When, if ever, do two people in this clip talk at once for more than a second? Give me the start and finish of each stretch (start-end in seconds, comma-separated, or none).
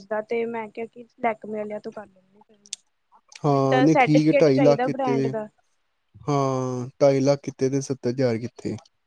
3.5-5.3